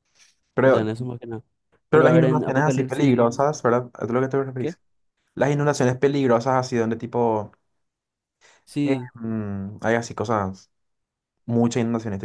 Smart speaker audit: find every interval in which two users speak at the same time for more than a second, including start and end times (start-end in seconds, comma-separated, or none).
1.9-3.5